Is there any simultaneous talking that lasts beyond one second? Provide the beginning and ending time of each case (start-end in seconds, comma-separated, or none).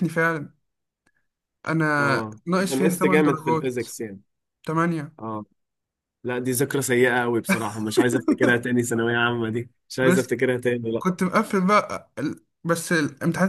2.0-3.8